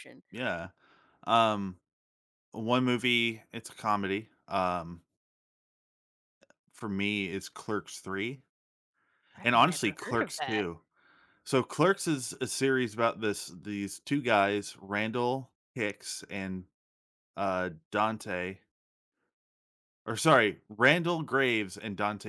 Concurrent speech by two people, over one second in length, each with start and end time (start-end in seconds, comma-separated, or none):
9.4-10.6